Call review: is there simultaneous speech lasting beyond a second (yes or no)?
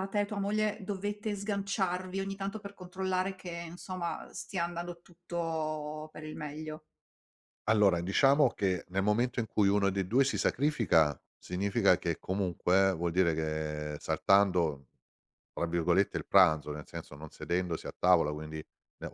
no